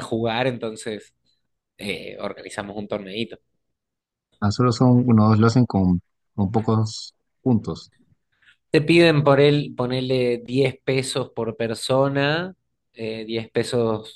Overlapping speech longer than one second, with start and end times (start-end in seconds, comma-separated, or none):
none